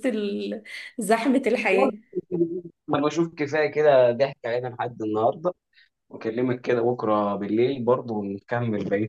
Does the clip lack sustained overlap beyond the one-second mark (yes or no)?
yes